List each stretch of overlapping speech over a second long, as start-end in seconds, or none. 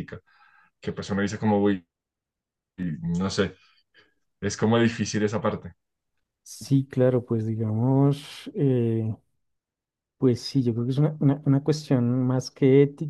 none